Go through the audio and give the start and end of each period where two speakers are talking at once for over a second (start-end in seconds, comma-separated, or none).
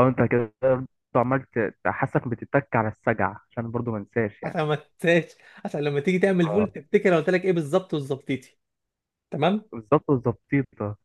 none